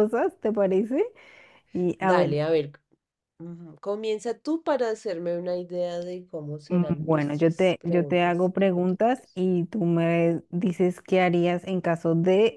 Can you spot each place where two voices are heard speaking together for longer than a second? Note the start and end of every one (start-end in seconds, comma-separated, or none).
6.7-9.4